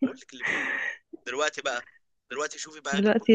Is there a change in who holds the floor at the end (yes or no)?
no